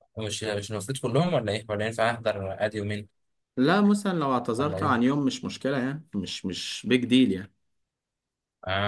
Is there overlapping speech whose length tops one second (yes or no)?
no